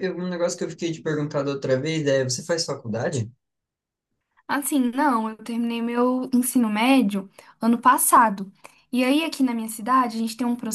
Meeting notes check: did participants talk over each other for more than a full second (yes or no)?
no